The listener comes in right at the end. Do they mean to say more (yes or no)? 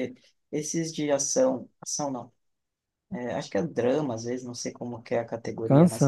no